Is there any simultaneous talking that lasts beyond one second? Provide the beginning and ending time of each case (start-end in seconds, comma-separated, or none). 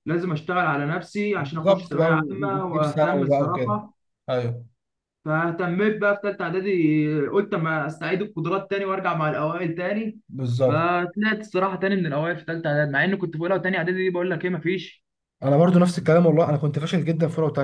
1.4-3.8